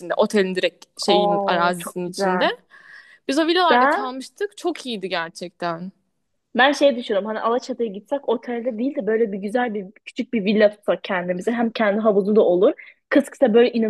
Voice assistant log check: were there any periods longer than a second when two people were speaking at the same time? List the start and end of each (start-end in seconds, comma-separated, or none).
1.1-2.5